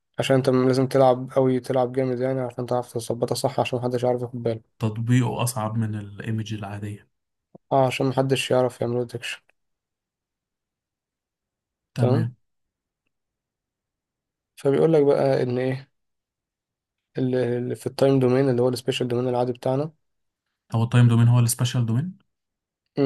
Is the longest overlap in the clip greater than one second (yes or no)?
no